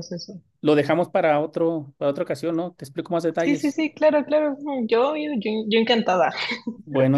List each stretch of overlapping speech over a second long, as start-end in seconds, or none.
none